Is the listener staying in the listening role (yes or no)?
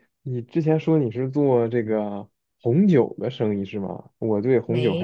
yes